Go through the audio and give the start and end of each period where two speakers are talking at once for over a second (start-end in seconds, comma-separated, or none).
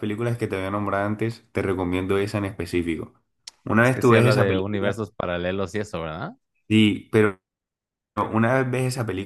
3.8-5.0